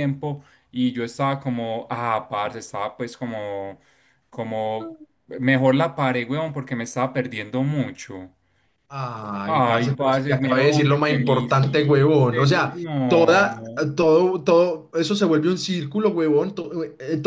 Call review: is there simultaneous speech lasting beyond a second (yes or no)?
yes